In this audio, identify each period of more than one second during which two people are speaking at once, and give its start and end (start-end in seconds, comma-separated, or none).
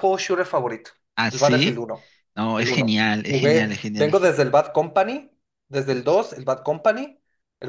2.6-4.1